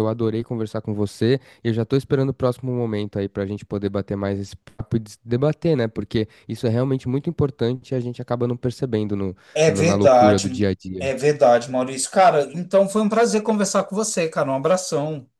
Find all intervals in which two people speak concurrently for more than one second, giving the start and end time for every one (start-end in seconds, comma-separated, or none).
9.5-11.1